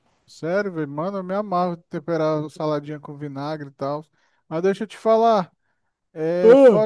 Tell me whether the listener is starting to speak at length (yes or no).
no